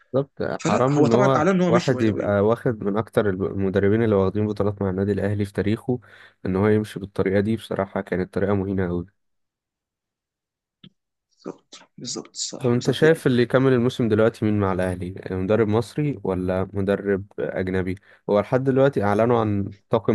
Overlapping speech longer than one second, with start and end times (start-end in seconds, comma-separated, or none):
0.6-2.4